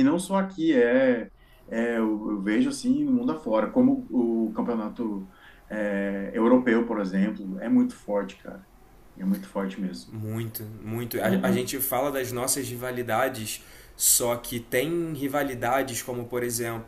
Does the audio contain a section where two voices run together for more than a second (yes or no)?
no